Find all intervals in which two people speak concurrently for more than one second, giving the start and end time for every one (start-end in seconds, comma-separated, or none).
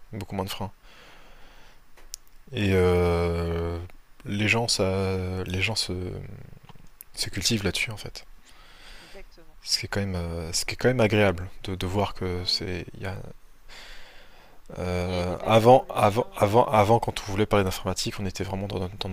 15.0-17.6